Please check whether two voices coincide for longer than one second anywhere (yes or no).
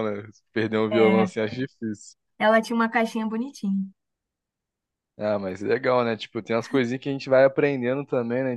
no